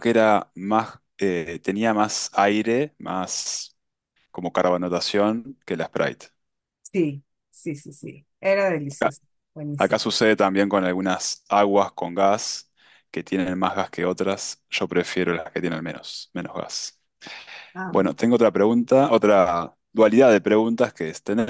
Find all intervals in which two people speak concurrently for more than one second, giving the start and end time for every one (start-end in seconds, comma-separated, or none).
none